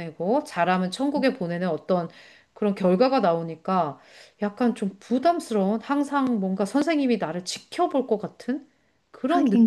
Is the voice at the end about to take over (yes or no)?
yes